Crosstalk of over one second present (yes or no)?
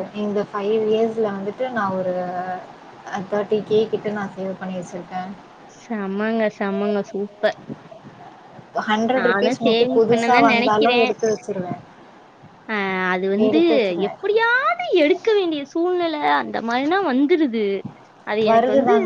yes